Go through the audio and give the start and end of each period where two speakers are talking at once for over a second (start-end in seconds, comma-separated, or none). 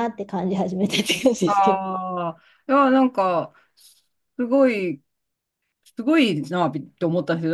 none